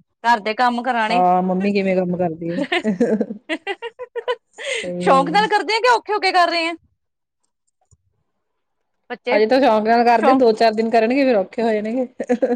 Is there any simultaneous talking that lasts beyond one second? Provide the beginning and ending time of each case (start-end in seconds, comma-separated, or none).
none